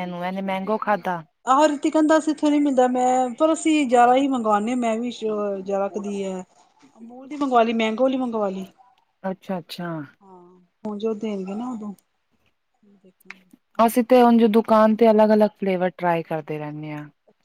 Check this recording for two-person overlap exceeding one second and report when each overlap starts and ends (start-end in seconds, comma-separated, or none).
none